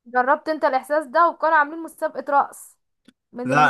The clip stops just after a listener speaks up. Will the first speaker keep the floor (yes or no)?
yes